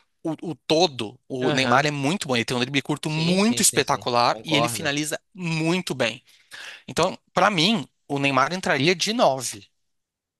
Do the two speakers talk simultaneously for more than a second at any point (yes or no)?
yes